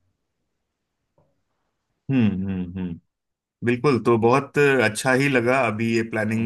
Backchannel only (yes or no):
yes